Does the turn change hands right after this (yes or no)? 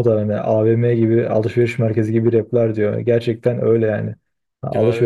no